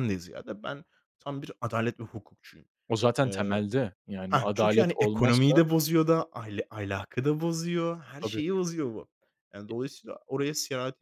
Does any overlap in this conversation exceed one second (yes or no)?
yes